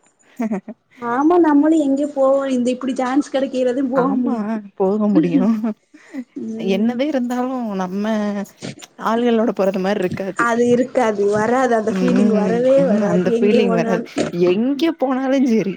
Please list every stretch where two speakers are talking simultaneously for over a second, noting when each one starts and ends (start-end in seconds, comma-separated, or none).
12.0-14.0